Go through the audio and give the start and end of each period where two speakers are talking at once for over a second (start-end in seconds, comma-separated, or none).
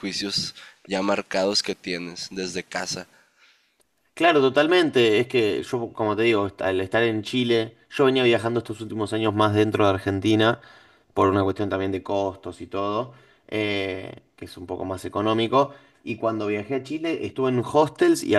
none